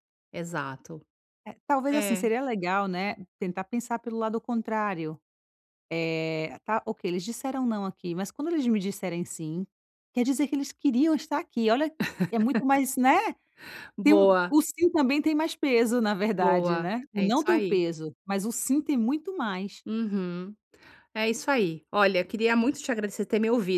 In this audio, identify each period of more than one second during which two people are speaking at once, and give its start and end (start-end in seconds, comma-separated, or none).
16.4-17.8